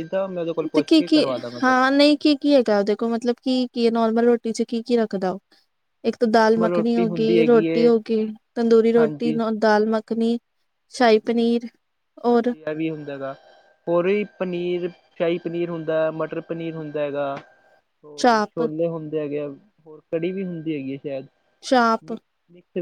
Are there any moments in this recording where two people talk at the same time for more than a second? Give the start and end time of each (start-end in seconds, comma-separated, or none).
6.3-7.9